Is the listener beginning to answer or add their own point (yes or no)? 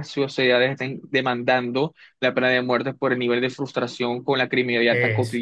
no